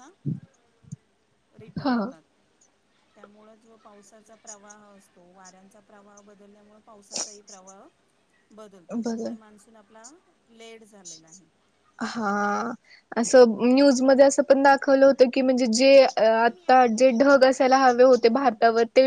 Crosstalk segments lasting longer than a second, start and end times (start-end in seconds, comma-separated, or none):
16.3-18.5